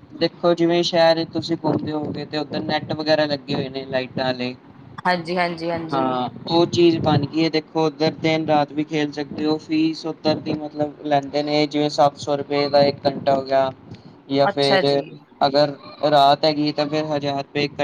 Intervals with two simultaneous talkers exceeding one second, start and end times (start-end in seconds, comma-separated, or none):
none